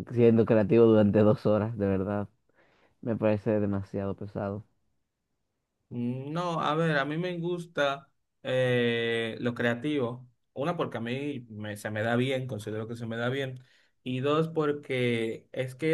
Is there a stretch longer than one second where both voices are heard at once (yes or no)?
no